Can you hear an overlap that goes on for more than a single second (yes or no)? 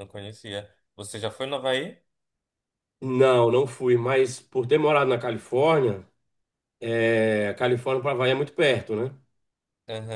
no